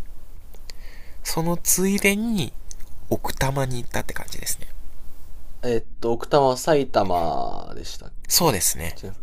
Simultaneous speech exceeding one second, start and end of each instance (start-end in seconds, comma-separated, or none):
none